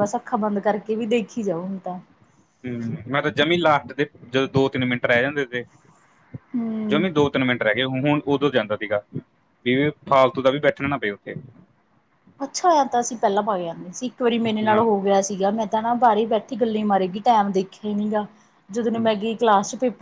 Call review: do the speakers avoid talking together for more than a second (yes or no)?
yes